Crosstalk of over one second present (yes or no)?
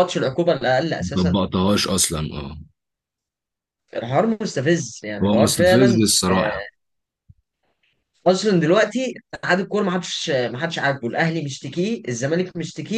yes